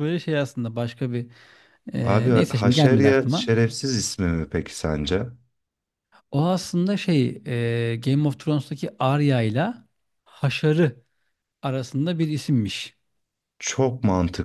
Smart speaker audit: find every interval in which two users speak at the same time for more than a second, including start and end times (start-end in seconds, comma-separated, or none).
2.0-3.5